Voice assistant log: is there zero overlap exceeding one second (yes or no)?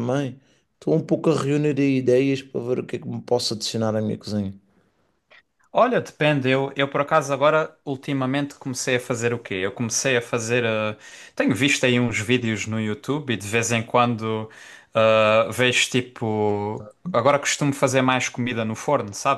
yes